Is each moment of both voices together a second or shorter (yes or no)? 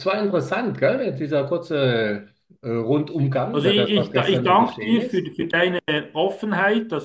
no